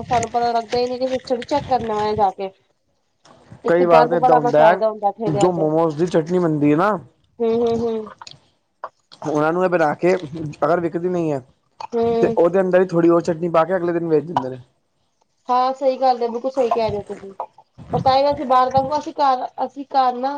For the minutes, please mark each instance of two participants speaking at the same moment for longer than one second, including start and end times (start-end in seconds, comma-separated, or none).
3.7-5.6